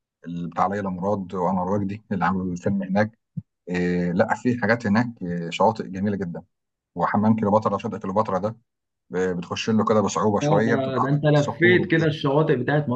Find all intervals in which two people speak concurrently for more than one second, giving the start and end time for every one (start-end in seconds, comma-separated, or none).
10.4-12.1